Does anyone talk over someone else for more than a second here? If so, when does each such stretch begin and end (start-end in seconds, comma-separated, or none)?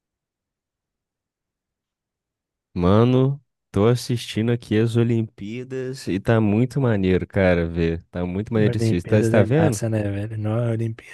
8.5-9.8